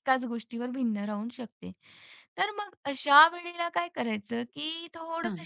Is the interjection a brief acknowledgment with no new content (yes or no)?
yes